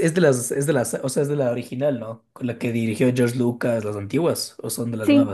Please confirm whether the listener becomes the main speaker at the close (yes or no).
yes